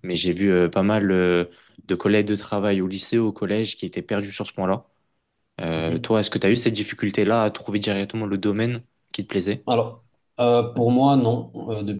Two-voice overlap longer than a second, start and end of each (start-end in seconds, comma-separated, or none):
none